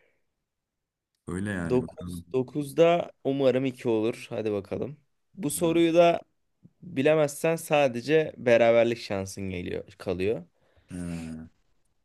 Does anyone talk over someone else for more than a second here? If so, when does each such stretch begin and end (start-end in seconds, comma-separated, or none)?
none